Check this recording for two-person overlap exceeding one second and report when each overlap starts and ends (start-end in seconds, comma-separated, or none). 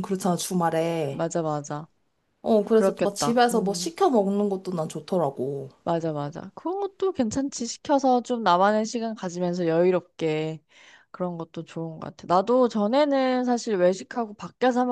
2.7-3.9